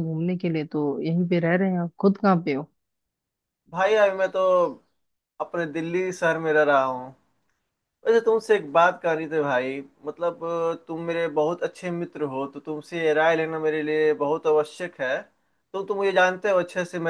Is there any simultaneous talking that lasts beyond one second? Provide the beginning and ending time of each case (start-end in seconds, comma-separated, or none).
none